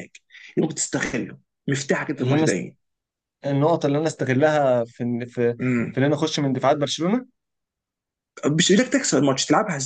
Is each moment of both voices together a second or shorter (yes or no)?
yes